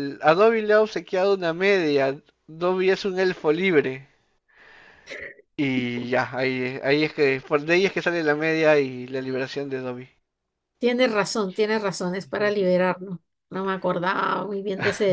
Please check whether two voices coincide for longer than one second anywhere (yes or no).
no